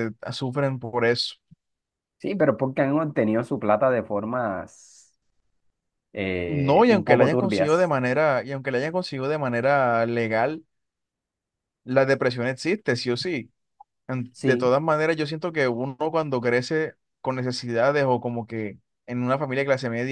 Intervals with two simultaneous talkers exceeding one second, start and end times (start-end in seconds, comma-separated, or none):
6.5-7.9